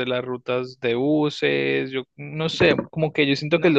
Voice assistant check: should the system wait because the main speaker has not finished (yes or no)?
yes